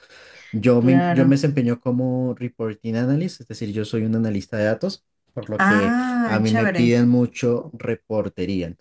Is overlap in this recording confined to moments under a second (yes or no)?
no